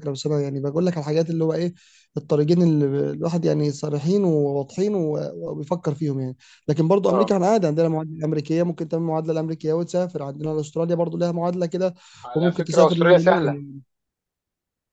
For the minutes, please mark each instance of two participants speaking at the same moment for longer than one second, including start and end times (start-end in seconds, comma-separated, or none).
12.3-13.6